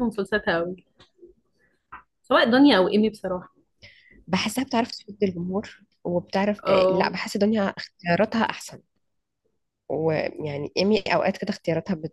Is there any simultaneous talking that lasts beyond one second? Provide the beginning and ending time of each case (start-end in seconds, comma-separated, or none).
none